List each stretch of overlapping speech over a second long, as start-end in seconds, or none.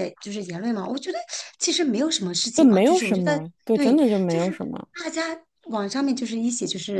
2.5-4.6